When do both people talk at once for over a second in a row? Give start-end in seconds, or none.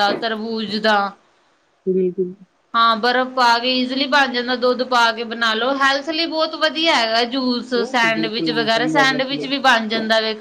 7.8-9.5